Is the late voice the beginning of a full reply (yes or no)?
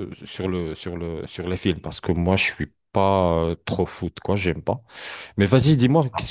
no